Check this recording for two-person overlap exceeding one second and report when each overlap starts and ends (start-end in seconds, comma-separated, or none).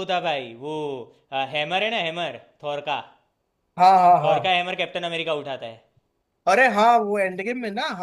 none